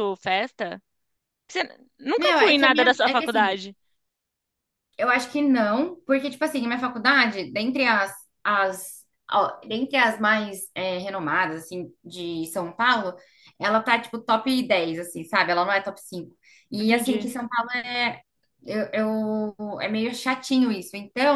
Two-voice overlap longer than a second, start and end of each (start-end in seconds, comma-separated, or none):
2.2-3.6